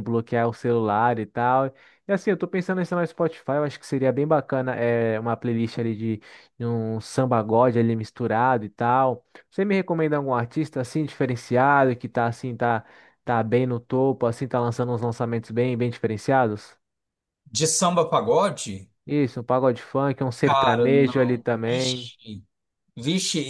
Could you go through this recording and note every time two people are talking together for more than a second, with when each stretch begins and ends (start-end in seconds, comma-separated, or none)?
20.4-22.1